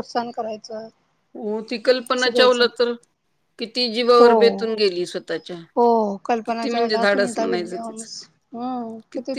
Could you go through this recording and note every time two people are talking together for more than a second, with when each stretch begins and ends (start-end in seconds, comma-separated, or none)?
6.5-8.1